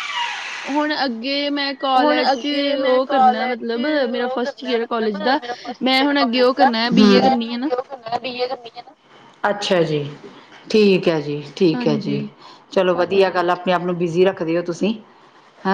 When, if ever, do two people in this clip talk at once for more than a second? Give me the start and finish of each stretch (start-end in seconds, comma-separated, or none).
none